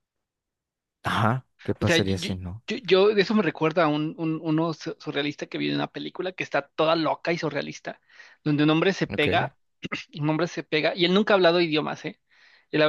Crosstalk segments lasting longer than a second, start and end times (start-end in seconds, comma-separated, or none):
none